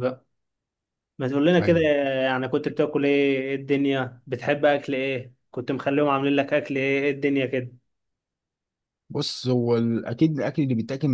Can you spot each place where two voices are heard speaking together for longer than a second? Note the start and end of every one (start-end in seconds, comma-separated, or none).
none